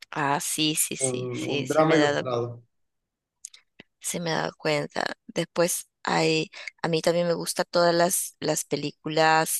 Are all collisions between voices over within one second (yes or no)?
no